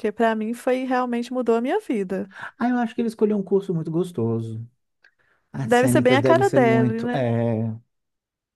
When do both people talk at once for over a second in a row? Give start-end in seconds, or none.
5.6-7.3